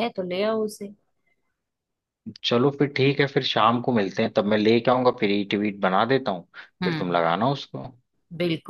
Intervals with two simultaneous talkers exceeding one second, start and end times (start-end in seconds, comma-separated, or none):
none